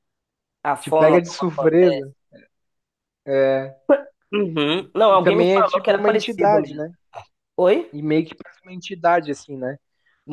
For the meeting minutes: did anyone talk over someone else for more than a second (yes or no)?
yes